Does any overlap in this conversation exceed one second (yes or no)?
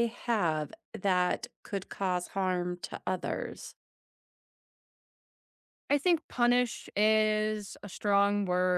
no